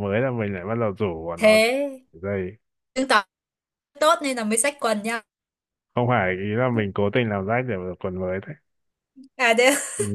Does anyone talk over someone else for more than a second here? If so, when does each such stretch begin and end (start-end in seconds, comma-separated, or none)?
none